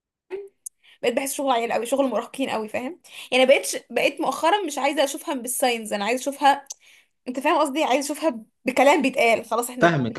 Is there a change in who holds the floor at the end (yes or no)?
yes